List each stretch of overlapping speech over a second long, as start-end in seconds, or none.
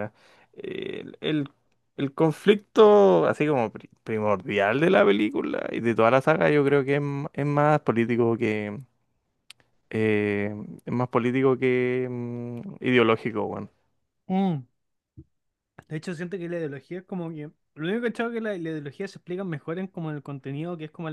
none